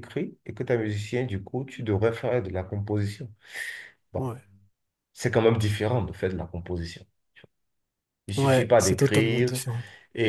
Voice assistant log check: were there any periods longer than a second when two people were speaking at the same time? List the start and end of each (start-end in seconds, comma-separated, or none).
8.3-9.6